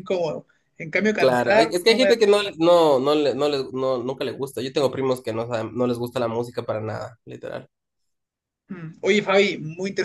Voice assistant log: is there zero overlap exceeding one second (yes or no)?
no